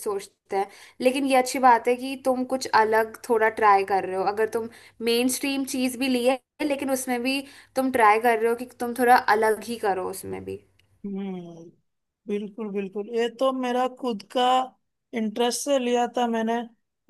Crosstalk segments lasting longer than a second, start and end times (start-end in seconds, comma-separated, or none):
none